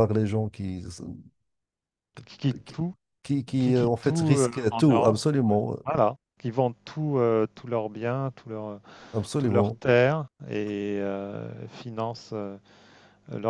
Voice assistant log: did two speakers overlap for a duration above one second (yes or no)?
yes